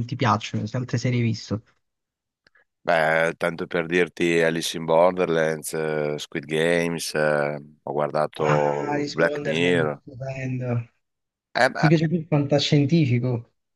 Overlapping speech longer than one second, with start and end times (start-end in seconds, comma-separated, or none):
8.4-10.0